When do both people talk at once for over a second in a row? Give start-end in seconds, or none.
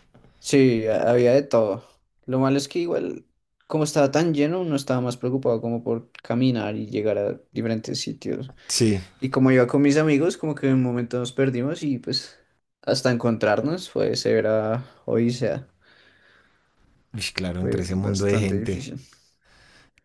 17.6-18.9